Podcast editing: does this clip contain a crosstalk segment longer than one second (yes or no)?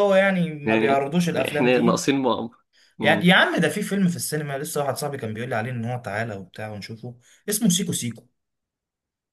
yes